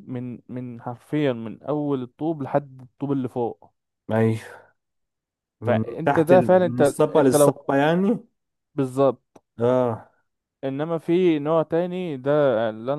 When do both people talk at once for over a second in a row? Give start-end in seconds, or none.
5.7-7.6